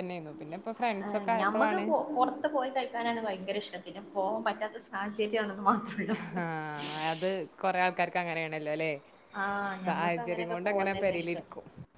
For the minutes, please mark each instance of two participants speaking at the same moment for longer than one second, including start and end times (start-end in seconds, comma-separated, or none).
9.9-11.4